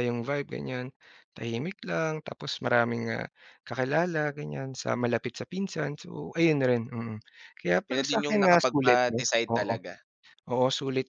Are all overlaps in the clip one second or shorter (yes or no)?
no